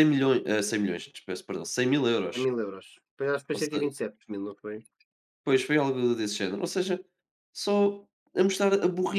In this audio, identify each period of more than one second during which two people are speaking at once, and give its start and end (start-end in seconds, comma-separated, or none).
none